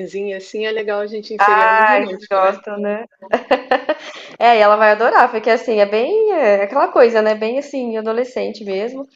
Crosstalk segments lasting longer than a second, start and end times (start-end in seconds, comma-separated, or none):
1.4-2.6